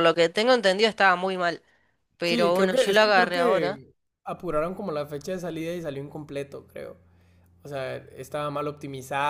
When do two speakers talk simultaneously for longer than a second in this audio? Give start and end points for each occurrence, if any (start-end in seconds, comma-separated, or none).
2.2-3.8